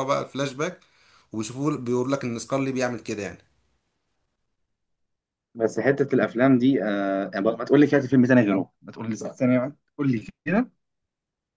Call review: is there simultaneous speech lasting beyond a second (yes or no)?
no